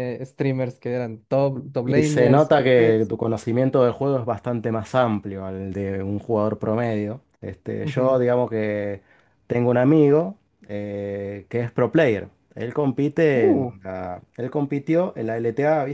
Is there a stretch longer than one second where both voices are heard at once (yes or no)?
yes